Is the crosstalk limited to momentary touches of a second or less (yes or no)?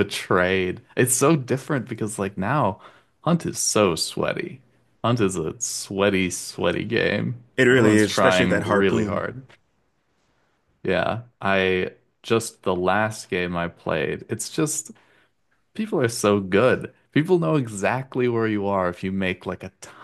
no